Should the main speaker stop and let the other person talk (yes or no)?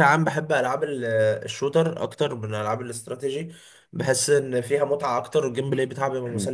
no